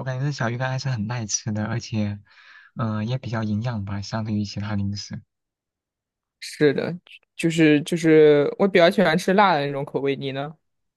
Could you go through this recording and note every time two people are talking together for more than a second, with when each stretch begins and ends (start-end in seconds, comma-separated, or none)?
none